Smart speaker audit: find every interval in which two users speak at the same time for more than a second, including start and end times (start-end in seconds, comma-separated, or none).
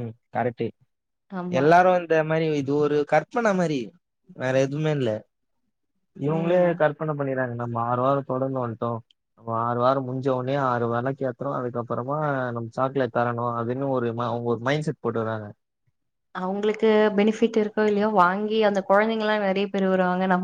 none